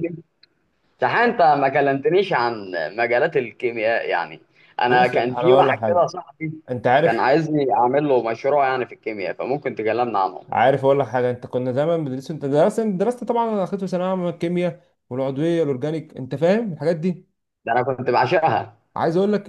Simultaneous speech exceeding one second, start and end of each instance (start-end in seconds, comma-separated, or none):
4.9-6.1